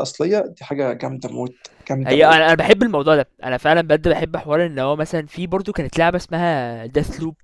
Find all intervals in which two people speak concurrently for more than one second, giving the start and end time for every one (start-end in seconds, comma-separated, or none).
none